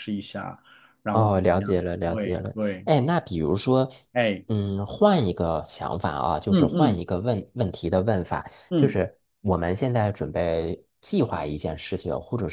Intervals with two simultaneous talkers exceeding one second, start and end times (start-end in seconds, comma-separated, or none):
1.1-2.9